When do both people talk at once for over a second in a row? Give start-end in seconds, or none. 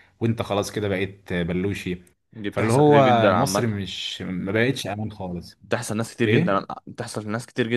2.5-3.8